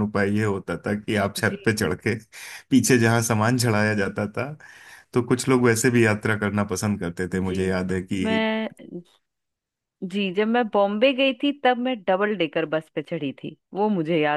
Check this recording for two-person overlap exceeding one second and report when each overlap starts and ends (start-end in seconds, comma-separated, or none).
none